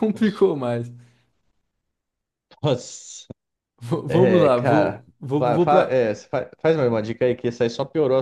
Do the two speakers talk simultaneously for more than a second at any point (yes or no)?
yes